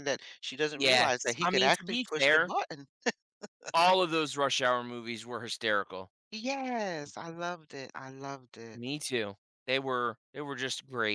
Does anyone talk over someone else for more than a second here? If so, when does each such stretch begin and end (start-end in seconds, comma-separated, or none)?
0.8-2.5